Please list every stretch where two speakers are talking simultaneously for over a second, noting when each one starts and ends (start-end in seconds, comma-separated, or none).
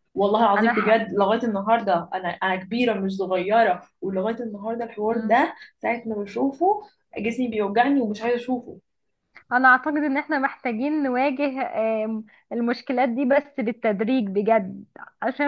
none